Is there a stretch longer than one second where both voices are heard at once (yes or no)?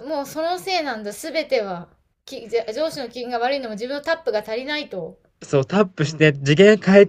no